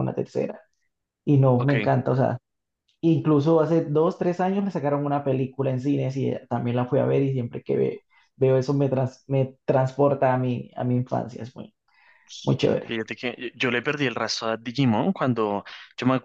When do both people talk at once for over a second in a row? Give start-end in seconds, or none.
none